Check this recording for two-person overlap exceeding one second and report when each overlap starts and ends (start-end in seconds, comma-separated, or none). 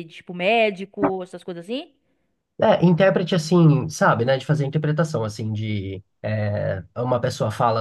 none